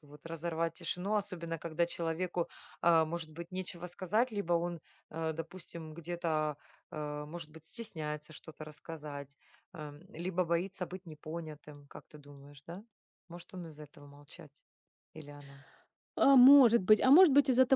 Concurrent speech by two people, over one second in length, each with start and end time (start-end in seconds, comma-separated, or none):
none